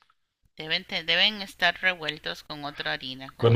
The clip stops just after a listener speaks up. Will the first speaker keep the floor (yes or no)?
no